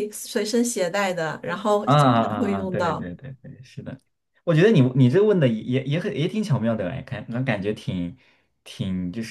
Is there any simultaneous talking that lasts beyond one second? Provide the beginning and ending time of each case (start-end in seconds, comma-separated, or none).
1.8-3.1